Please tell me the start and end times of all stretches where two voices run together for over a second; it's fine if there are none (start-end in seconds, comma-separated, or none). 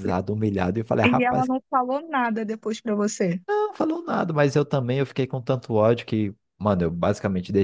none